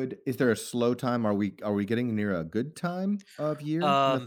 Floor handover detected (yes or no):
yes